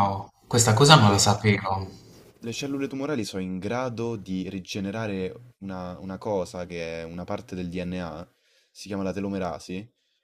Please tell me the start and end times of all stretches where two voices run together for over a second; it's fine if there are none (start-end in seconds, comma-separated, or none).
none